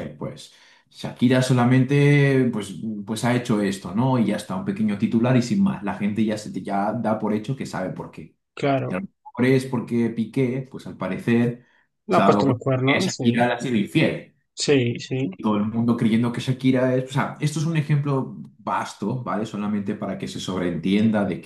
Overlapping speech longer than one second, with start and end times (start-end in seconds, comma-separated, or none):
12.1-13.5